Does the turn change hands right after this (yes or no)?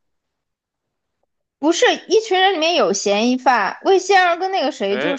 no